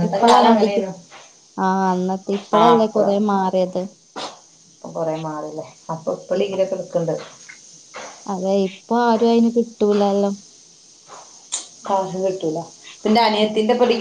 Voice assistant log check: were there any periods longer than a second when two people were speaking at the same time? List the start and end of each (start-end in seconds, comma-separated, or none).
none